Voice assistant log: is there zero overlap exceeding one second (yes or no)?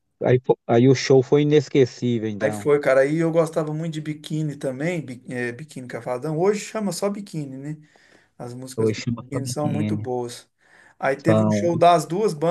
no